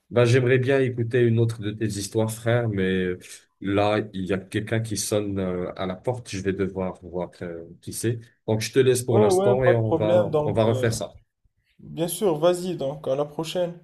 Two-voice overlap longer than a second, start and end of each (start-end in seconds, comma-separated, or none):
9.1-10.9